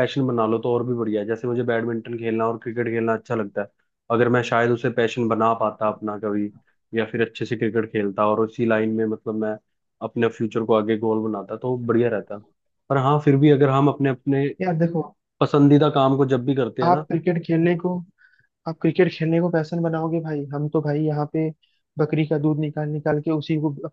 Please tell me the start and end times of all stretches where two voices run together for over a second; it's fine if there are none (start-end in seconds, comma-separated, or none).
none